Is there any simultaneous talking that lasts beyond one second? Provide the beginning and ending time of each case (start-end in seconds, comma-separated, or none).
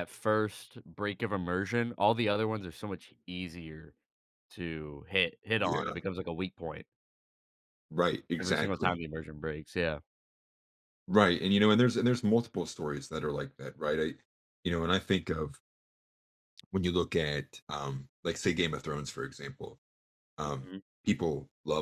none